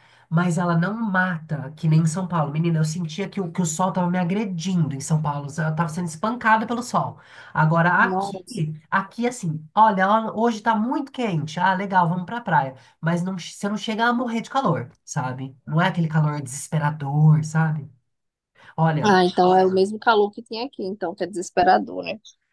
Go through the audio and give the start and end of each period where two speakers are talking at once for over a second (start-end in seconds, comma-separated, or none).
none